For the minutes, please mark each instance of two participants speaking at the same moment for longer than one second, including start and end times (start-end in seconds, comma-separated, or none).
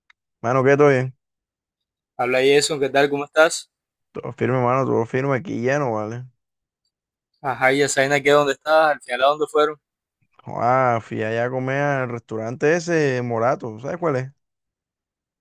none